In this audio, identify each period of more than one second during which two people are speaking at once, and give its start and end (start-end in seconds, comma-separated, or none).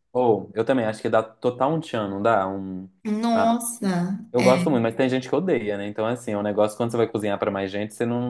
none